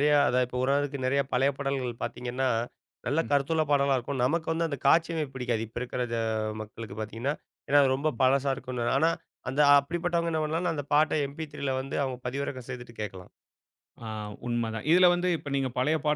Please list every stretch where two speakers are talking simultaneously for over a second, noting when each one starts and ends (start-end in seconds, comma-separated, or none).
none